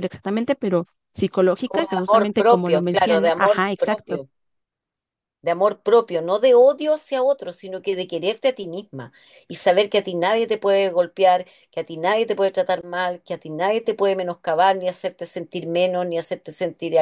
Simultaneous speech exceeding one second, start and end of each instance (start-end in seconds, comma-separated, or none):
1.6-4.2